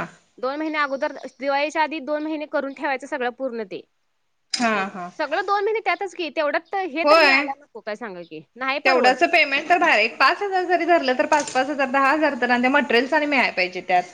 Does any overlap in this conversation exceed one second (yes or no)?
no